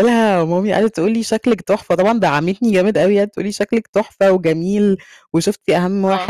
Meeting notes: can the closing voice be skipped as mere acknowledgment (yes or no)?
yes